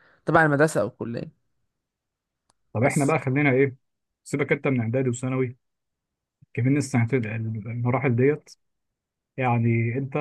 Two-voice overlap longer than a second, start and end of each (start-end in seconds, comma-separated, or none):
none